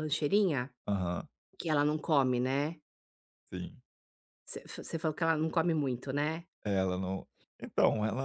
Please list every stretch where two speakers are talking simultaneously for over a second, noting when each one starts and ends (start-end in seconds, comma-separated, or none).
none